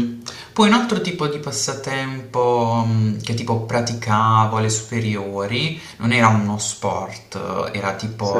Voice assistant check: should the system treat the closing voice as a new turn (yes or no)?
no